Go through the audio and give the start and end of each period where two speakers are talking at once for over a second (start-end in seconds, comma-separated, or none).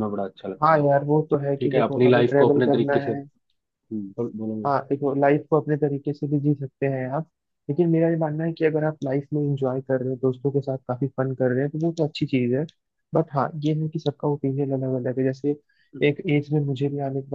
1.6-3.1